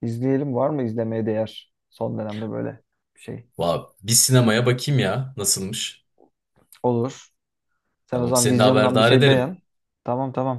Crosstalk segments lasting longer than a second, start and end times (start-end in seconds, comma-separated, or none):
8.1-9.6